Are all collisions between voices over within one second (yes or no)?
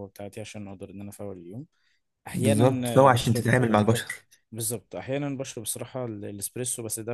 no